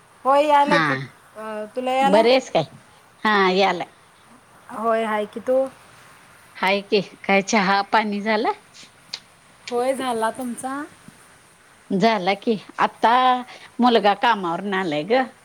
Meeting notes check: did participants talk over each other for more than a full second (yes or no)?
yes